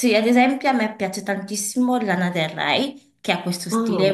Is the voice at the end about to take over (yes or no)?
no